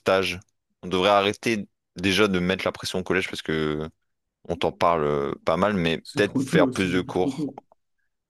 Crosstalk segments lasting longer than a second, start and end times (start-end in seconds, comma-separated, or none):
6.0-7.5